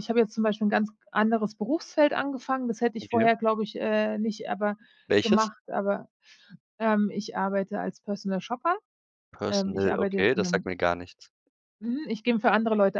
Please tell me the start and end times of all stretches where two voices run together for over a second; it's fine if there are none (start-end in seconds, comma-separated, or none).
9.5-10.7